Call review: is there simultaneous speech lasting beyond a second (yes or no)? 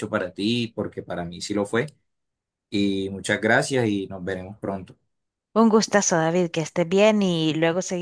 no